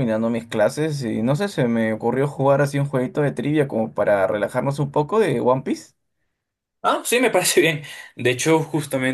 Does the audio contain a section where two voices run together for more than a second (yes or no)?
no